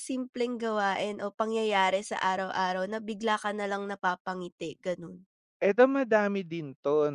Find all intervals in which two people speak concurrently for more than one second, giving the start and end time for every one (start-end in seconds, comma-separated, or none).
none